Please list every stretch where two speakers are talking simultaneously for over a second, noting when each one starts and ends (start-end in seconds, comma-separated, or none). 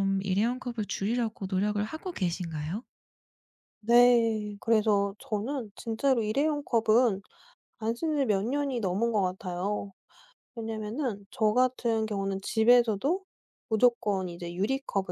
none